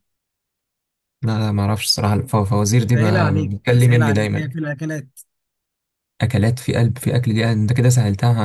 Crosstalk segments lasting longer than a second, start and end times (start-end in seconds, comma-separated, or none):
2.9-4.6